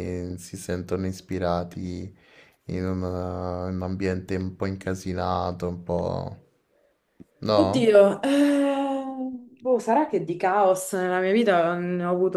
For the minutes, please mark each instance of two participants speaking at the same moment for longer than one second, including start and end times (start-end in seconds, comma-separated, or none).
none